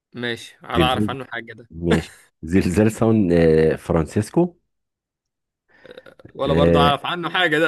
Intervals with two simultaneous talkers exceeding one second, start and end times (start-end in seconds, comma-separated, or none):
none